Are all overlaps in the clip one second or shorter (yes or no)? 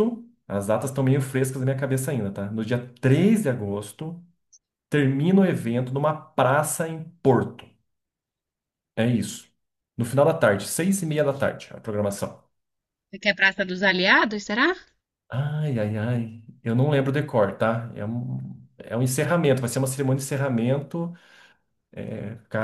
yes